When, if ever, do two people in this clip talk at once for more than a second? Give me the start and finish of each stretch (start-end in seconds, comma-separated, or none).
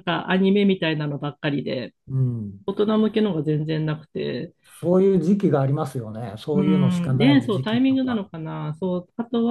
6.5-8.2